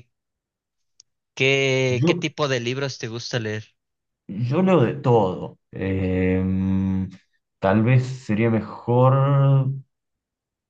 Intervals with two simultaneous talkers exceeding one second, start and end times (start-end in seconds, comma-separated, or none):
none